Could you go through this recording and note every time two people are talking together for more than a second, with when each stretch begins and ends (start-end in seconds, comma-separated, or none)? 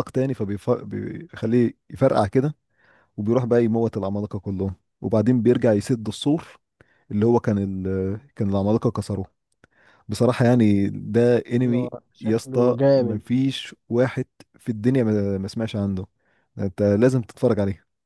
11.6-13.2